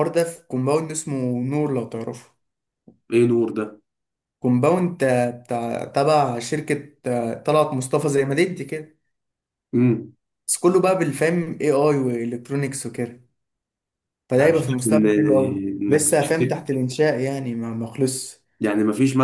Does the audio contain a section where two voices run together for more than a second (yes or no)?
yes